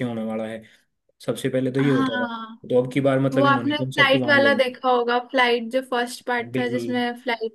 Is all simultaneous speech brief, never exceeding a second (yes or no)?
no